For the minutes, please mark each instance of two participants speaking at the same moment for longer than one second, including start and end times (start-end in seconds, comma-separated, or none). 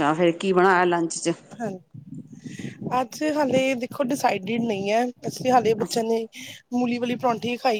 none